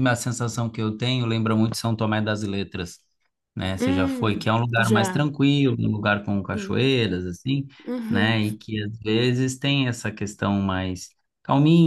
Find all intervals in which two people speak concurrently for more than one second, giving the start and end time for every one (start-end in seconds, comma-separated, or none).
3.8-5.3